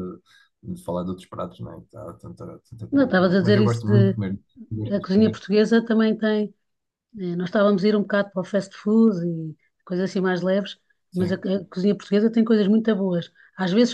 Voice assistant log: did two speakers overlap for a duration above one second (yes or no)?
yes